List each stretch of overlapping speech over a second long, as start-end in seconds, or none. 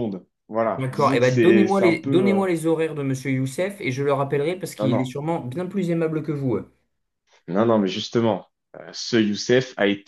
0.7-2.4